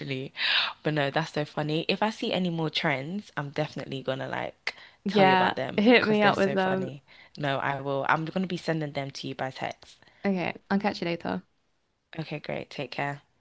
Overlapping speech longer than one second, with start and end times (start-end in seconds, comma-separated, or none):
5.0-6.9